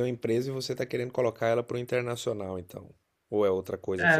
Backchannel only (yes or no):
no